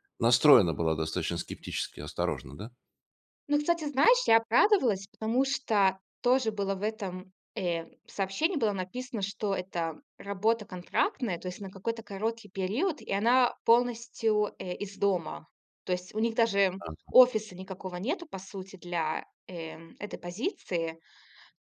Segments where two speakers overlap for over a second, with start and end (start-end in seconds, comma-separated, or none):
none